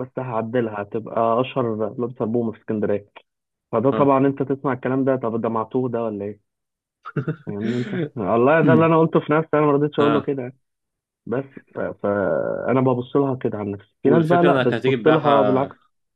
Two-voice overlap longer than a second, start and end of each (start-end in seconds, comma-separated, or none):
14.1-15.7